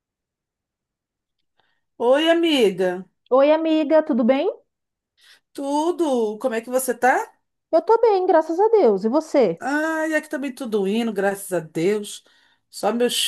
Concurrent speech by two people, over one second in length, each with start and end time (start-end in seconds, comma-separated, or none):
none